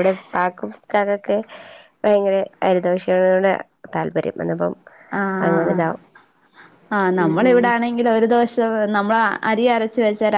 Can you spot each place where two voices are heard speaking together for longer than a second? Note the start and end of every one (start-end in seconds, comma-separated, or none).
none